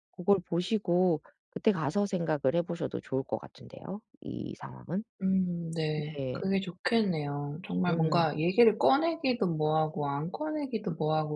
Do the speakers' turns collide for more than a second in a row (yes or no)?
no